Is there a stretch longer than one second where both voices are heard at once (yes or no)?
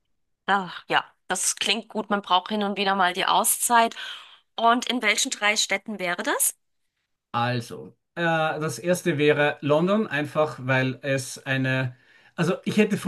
no